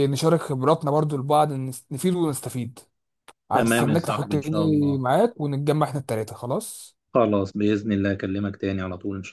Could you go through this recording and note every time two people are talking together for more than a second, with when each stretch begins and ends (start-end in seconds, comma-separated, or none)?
3.5-5.0